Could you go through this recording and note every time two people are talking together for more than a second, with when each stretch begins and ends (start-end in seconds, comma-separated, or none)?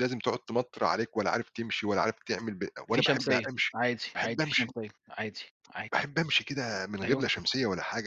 2.9-4.7